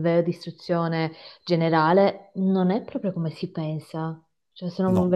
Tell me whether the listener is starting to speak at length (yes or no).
no